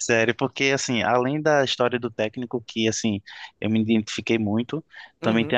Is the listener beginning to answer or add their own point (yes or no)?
no